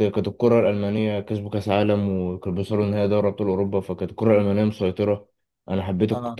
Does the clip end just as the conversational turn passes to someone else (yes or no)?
no